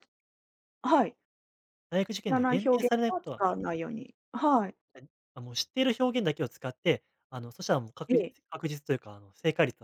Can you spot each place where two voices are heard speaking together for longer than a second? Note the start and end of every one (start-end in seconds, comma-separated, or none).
2.1-3.4